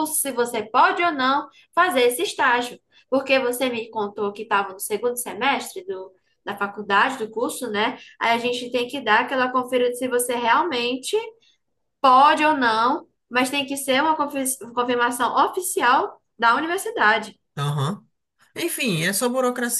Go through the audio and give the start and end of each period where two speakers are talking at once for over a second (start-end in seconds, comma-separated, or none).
none